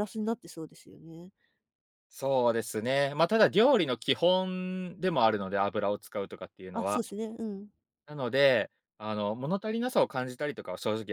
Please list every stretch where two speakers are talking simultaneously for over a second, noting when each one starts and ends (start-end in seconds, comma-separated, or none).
none